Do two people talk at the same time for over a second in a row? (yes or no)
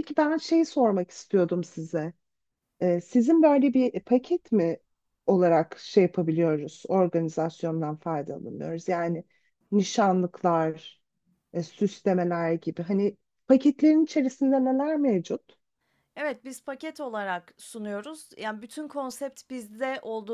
no